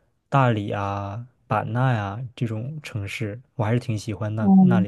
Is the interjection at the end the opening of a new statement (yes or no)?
yes